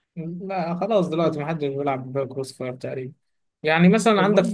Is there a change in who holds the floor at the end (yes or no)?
no